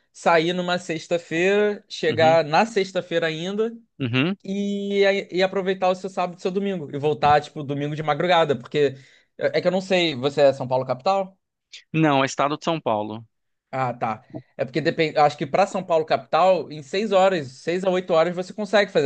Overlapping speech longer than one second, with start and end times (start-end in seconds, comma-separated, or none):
none